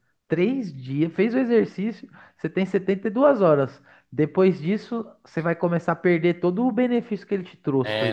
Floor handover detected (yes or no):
yes